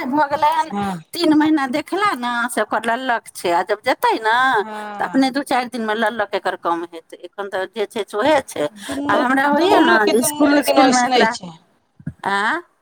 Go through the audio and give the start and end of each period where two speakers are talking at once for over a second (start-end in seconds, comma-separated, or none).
8.9-11.2